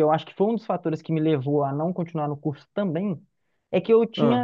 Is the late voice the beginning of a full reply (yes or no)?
no